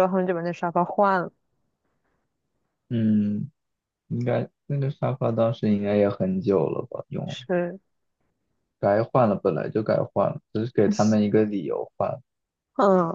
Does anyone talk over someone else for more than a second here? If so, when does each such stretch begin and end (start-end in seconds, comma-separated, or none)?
none